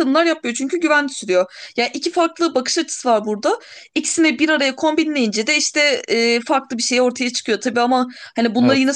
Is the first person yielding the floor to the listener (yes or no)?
no